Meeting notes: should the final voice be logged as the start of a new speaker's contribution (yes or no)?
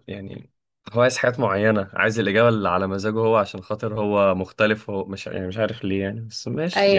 yes